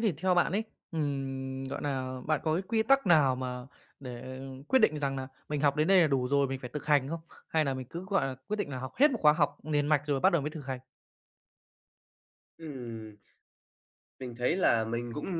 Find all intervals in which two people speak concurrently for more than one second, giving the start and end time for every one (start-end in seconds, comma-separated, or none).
none